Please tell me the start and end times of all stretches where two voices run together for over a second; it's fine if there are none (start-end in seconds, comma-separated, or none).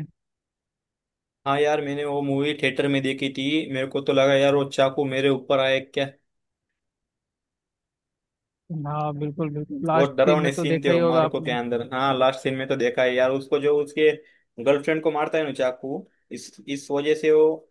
9.9-11.6